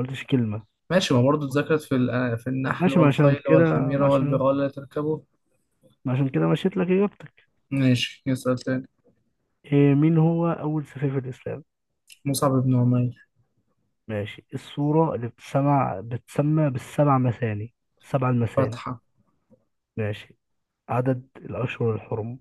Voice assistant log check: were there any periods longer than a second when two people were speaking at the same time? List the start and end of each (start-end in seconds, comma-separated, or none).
2.8-4.4